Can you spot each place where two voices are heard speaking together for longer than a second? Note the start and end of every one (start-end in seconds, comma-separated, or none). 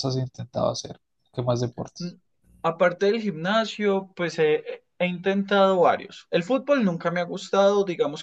none